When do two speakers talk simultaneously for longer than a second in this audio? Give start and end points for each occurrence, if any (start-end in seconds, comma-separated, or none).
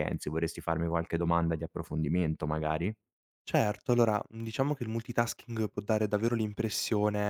none